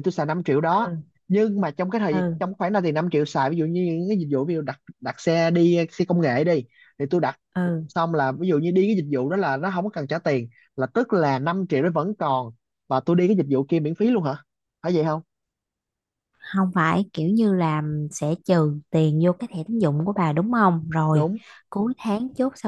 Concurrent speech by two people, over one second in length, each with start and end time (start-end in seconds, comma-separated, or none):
none